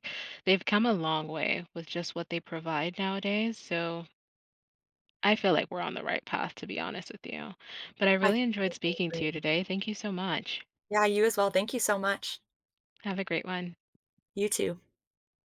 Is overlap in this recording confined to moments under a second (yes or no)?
no